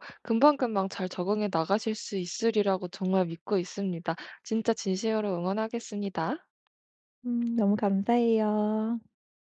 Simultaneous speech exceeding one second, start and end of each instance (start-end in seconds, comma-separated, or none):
none